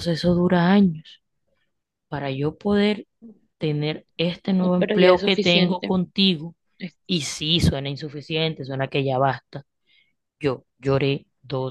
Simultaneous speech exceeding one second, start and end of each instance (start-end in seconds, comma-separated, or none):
4.6-6.0